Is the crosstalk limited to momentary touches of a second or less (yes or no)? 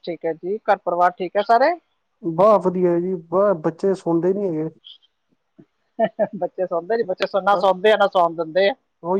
yes